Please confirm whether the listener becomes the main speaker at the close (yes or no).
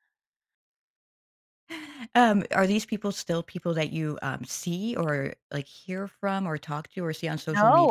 yes